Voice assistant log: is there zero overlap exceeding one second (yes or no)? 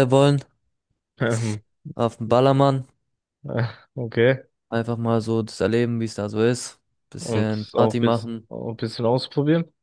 no